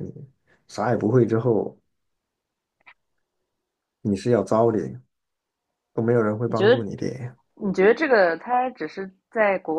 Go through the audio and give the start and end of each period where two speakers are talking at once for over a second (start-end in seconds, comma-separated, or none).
none